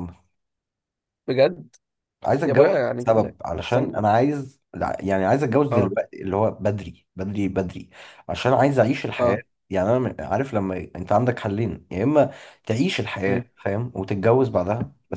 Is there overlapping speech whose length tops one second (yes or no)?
yes